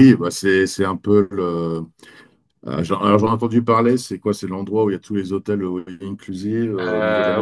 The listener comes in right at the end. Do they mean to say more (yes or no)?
yes